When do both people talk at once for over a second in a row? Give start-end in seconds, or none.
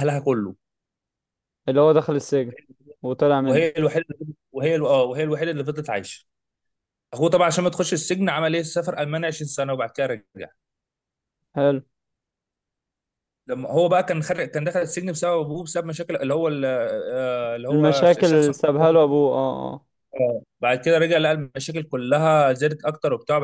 17.7-19.0